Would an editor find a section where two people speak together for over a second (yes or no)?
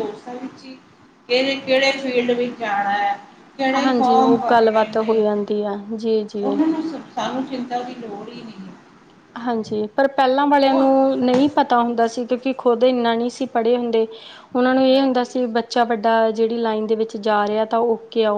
yes